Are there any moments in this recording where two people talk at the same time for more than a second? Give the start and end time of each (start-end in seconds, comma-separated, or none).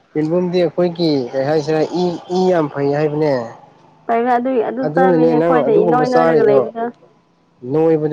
4.8-6.6